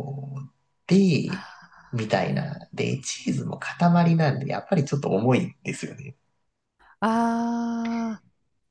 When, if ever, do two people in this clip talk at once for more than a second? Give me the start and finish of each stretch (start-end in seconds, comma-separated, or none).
none